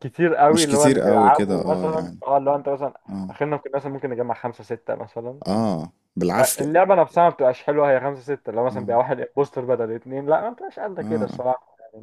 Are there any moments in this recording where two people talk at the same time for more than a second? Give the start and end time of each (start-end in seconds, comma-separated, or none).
0.5-2.2